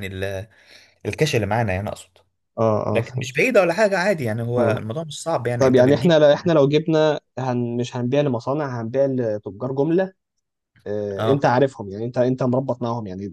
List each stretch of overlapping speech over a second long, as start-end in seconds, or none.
none